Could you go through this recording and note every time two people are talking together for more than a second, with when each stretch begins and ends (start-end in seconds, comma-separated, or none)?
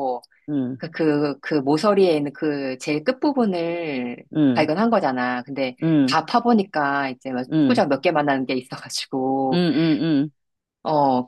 none